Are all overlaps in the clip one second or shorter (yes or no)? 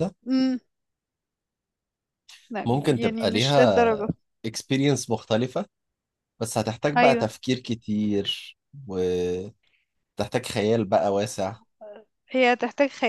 no